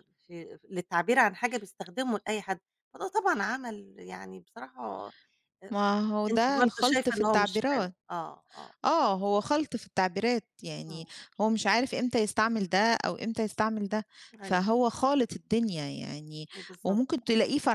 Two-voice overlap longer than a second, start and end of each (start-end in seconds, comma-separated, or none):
6.3-8.0